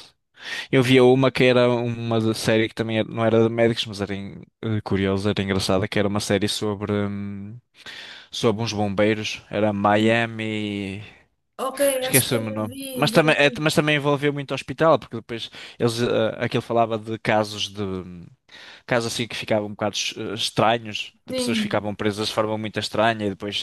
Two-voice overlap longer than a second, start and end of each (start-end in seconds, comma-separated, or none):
12.0-13.6